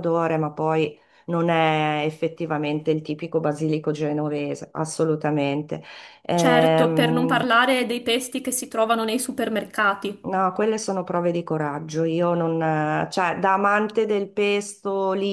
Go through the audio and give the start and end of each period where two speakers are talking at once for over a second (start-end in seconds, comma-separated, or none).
6.3-7.5